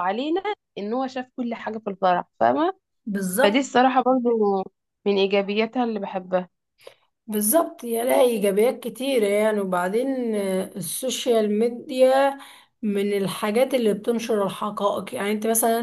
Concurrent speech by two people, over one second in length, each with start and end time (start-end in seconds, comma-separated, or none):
none